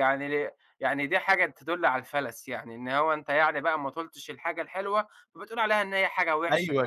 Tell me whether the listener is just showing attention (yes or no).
no